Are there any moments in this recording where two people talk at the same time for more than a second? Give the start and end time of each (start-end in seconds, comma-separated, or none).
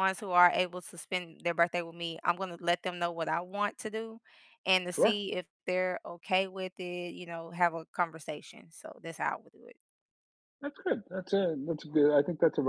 none